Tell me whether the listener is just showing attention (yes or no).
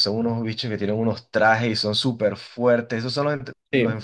yes